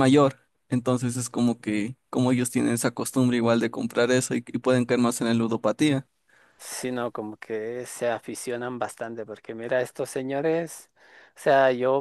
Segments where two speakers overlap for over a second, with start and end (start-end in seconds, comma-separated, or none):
none